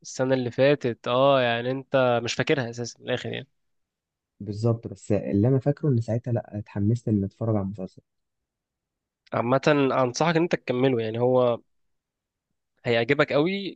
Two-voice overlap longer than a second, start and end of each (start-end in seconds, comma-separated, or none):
none